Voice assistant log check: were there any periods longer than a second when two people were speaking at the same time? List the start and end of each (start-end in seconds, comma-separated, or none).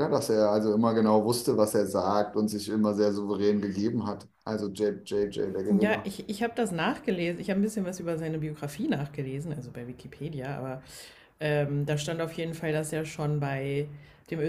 none